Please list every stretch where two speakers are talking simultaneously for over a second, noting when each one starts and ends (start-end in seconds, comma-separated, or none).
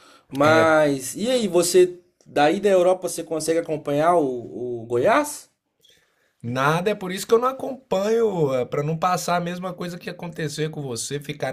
none